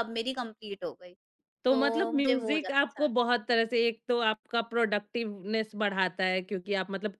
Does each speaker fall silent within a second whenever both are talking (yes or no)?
no